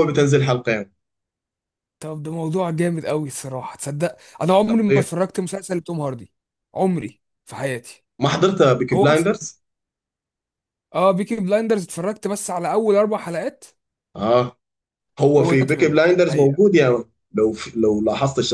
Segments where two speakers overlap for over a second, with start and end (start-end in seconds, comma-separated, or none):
15.4-16.6